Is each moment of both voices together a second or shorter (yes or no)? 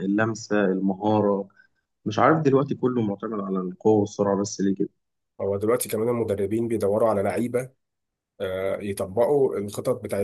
yes